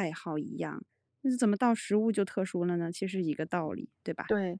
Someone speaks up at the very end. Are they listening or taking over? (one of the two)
taking over